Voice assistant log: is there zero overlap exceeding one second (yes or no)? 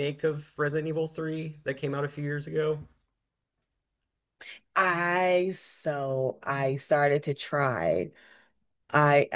yes